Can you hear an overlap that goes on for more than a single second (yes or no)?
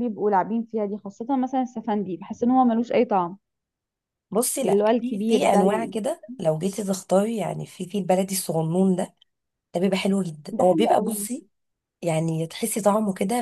yes